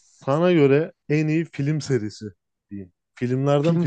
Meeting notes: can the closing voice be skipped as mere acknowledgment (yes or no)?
no